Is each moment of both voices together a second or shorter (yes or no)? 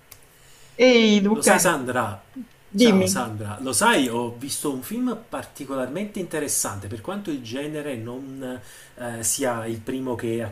yes